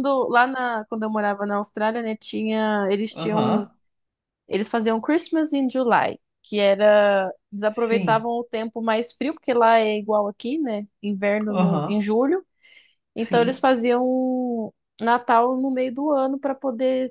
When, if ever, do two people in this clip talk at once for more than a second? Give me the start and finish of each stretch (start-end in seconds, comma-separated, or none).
none